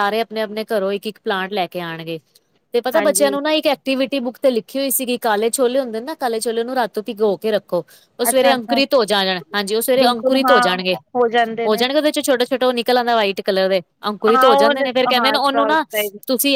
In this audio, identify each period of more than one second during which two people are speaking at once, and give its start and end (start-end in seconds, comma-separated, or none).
14.3-15.8